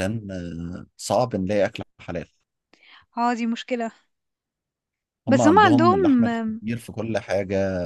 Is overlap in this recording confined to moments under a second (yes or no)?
no